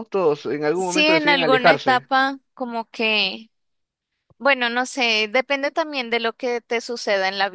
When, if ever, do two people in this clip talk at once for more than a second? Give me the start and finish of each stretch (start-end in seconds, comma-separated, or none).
0.7-2.1